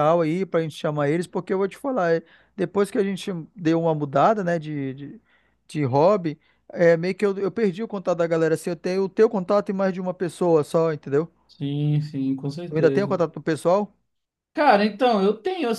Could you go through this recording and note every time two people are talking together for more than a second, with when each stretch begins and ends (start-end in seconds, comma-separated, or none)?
none